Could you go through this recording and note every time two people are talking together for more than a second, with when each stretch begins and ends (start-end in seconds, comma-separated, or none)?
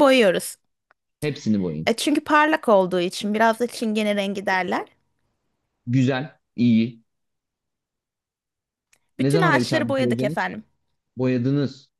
9.2-10.4